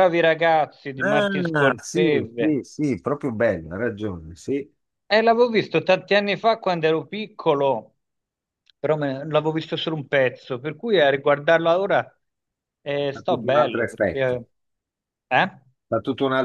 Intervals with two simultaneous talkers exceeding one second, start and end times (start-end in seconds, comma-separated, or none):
1.0-2.6, 13.1-14.4